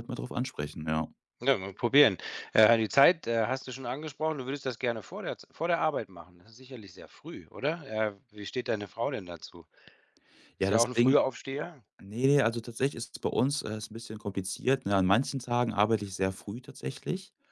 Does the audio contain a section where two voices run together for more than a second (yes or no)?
no